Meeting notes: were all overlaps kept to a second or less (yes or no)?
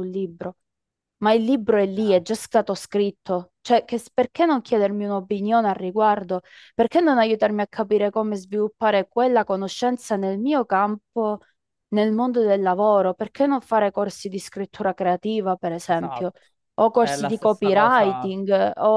no